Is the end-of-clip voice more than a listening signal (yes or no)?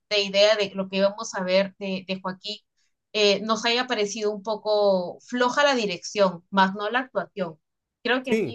no